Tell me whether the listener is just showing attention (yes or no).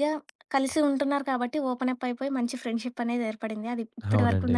yes